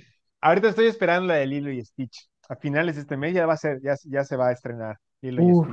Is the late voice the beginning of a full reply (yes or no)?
yes